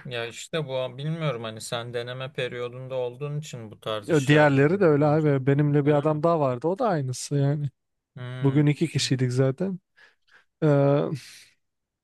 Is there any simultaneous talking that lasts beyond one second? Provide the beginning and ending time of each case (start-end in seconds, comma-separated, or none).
4.0-6.2